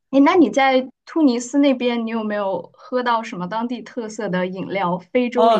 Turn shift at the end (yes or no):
yes